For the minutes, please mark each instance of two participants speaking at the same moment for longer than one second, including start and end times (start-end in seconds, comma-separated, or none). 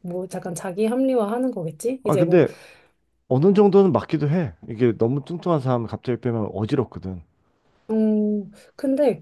none